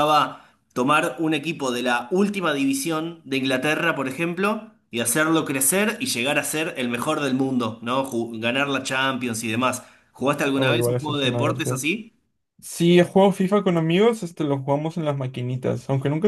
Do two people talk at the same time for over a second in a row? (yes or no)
yes